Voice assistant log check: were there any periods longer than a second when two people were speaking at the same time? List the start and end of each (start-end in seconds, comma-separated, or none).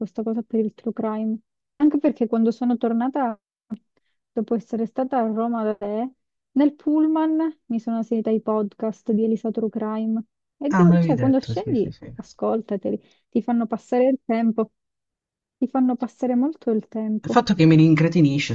10.7-12.2